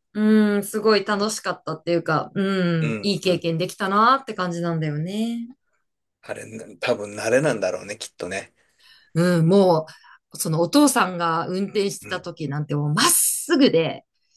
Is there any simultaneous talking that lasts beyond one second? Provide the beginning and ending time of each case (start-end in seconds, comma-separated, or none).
none